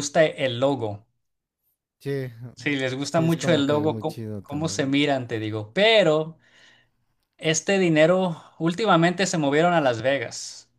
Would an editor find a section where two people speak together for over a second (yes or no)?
yes